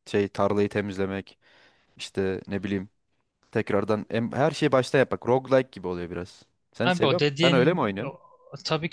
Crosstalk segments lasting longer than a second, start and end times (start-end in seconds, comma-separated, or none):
6.8-8.2